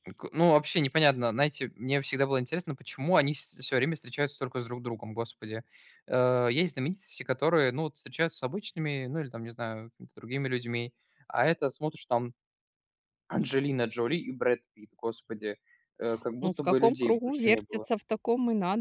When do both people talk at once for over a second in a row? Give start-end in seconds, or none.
16.4-17.9